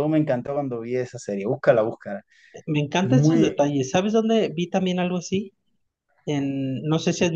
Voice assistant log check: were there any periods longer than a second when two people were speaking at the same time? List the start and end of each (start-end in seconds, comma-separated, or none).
none